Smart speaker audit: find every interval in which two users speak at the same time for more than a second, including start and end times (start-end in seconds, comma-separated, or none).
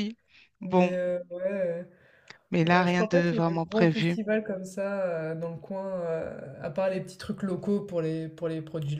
2.6-4.2